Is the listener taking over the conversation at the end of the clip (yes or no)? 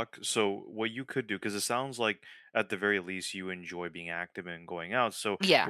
no